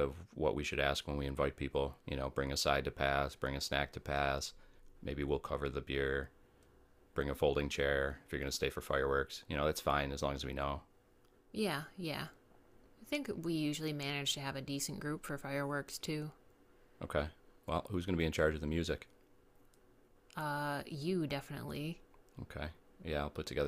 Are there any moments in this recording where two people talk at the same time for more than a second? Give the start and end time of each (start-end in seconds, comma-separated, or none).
none